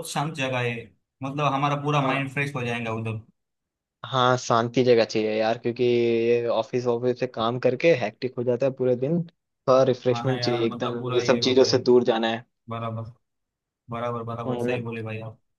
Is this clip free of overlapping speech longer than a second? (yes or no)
no